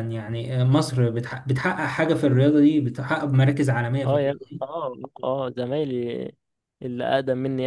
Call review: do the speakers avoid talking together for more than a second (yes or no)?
yes